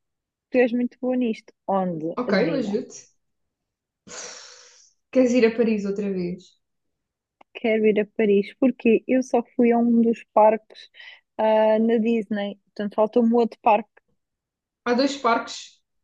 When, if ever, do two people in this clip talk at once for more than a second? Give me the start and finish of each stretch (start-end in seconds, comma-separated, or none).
none